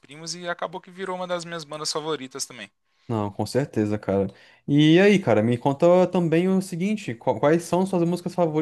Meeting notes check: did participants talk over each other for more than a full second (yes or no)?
no